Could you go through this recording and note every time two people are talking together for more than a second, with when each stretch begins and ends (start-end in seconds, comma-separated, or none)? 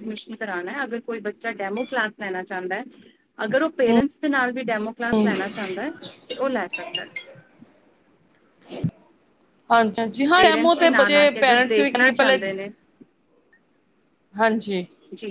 10.3-12.4